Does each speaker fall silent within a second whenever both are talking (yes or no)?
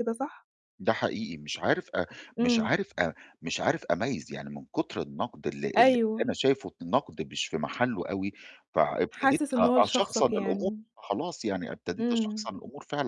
no